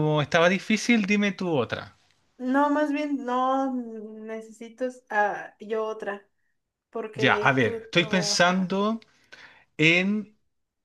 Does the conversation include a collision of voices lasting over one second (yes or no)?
yes